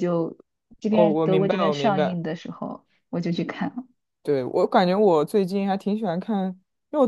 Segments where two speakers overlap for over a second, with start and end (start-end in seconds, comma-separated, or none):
0.9-2.2